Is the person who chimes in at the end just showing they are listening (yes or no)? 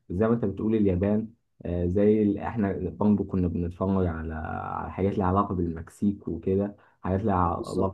yes